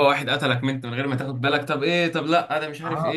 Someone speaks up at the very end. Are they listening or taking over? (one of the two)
taking over